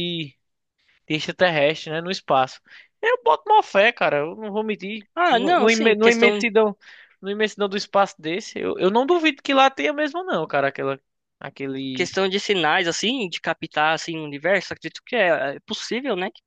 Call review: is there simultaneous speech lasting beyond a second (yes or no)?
yes